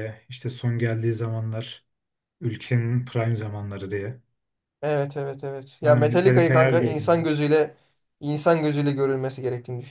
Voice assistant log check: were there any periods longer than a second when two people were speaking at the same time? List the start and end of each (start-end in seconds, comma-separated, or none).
5.8-7.3